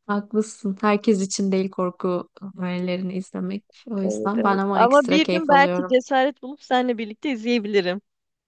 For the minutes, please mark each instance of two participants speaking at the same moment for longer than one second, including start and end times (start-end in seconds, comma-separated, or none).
4.0-6.0